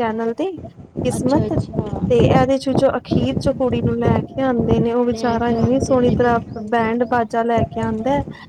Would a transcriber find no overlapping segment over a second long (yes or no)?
no